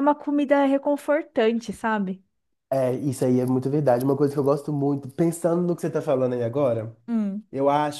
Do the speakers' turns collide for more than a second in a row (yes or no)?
no